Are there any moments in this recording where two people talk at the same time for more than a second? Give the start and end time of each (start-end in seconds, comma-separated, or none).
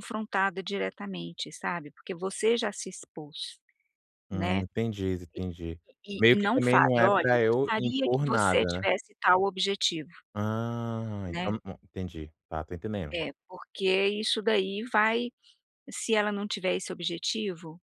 6.2-8.9